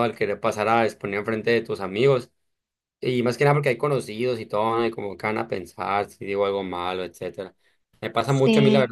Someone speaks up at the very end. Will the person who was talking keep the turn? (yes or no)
yes